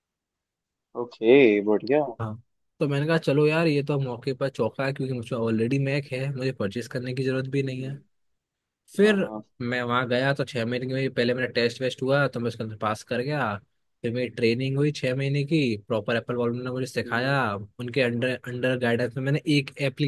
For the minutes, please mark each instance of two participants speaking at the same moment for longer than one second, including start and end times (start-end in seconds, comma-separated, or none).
none